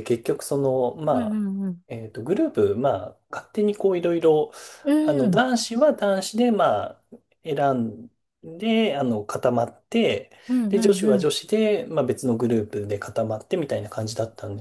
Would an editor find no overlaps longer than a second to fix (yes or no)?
yes